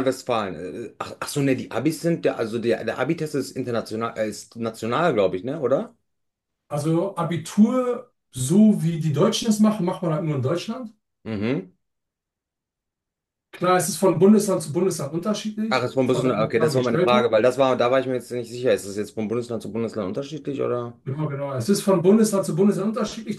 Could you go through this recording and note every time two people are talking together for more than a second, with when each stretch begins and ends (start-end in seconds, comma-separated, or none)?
15.7-17.4